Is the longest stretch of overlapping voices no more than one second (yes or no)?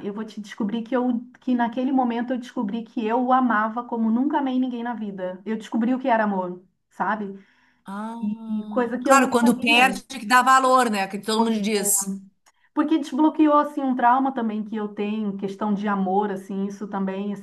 no